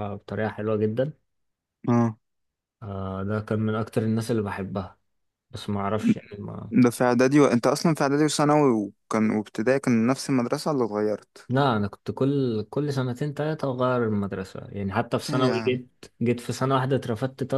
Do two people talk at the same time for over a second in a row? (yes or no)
no